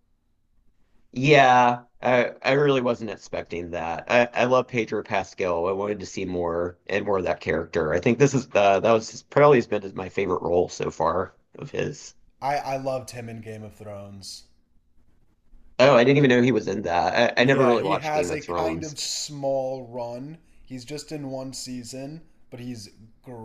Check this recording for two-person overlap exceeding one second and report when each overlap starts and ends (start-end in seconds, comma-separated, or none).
17.4-18.9